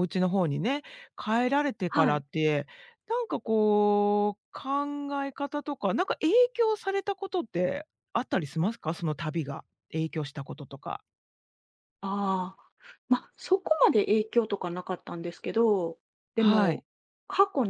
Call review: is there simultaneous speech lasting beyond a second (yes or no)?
no